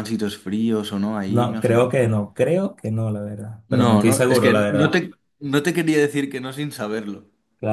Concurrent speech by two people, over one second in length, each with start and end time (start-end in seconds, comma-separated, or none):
3.7-5.0